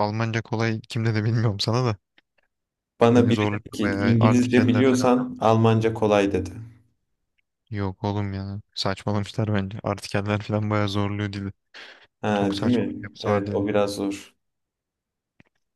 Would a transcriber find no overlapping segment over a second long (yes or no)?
no